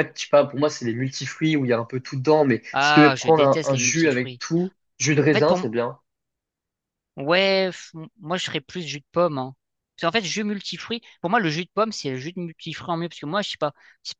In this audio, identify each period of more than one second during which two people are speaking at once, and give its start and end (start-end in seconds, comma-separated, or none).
2.7-4.4